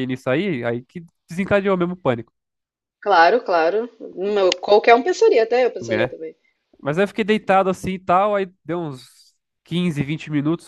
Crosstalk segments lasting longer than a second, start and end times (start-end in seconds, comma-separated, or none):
none